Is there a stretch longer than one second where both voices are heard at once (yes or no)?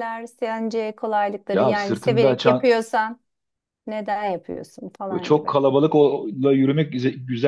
yes